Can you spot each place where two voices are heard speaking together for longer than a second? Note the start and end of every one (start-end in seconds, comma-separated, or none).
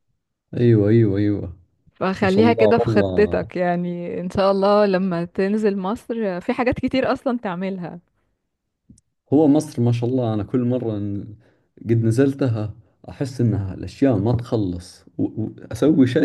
2.2-3.5